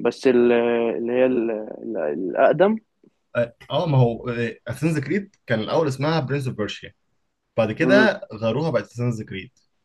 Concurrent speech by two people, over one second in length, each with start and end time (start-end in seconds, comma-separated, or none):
none